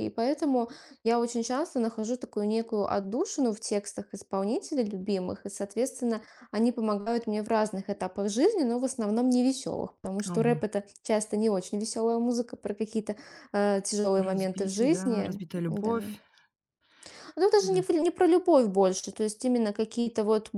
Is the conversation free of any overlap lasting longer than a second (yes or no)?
no